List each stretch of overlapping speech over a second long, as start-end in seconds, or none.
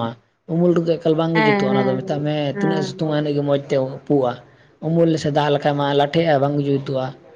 1.3-3.0